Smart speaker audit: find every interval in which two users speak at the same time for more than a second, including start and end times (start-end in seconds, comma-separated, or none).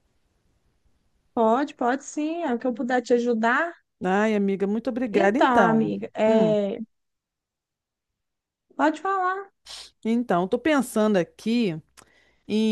5.1-6.5